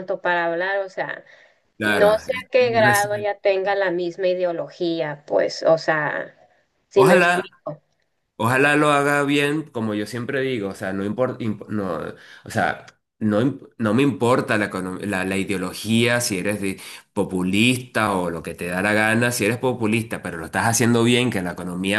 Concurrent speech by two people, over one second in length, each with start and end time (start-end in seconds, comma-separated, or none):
1.8-3.3